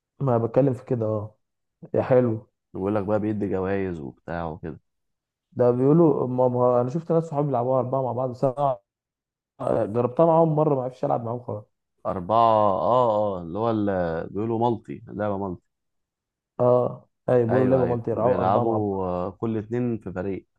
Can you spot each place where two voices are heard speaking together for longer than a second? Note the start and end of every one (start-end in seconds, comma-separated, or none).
17.5-19.0